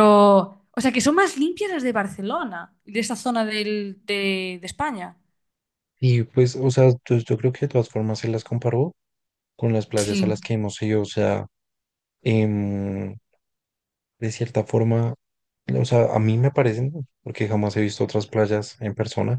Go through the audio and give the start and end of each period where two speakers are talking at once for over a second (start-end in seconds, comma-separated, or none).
none